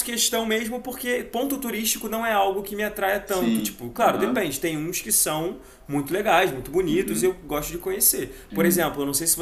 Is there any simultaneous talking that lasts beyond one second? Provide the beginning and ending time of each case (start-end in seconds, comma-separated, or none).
3.2-4.5